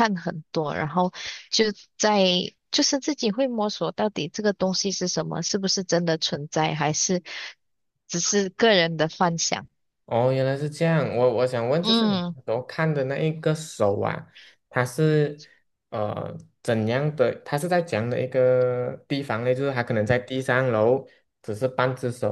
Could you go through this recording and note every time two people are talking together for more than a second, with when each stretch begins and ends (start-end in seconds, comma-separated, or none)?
none